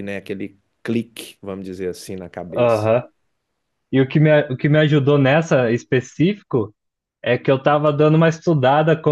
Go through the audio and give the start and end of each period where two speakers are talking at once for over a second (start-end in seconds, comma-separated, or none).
none